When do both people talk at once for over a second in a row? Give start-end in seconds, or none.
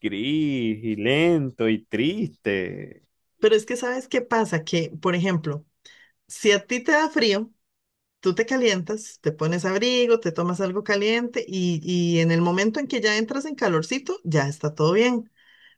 none